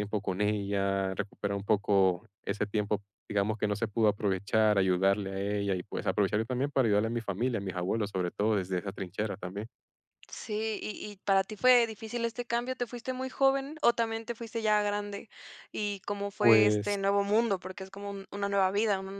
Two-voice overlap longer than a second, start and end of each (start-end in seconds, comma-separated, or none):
none